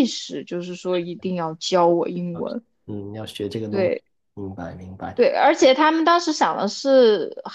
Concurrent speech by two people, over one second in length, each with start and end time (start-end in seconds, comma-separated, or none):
none